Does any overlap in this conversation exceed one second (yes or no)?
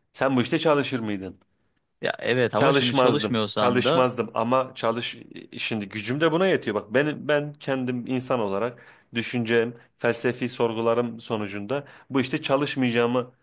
yes